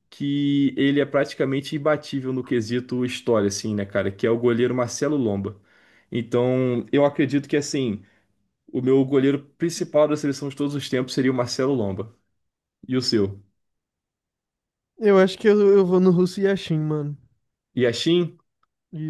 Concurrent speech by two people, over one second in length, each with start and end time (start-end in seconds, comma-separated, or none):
none